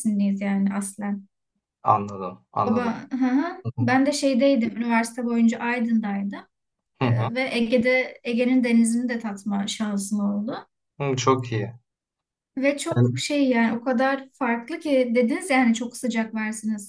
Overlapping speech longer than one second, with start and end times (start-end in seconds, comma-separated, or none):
none